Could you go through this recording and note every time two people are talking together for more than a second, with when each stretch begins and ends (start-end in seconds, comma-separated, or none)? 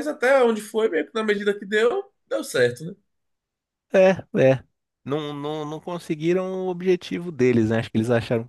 none